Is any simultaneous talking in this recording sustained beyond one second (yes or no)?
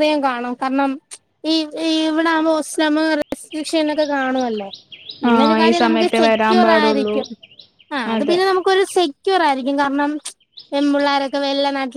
yes